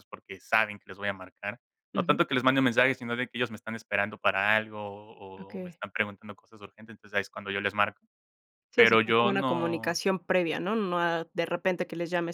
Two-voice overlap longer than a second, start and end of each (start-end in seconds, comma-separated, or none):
8.8-10.0